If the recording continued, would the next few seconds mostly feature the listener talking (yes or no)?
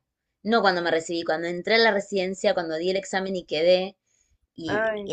no